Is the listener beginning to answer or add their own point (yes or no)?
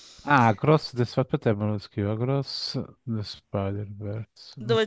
yes